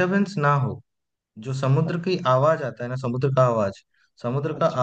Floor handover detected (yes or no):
no